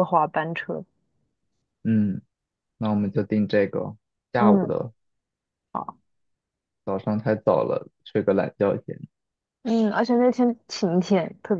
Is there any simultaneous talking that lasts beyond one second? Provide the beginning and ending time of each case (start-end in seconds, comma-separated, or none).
none